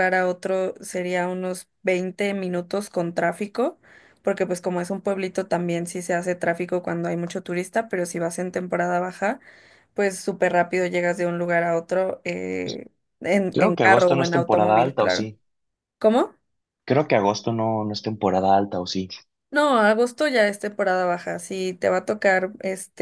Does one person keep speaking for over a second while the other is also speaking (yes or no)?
yes